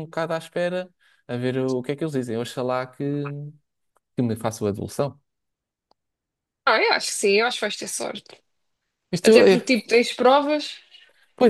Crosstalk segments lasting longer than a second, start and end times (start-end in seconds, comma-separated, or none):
none